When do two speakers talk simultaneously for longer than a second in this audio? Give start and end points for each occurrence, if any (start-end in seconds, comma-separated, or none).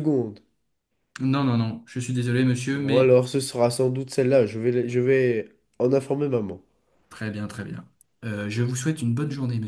none